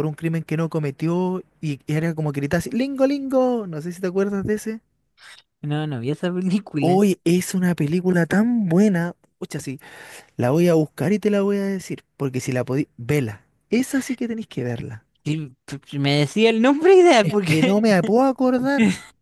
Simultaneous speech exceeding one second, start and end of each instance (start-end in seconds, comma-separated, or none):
none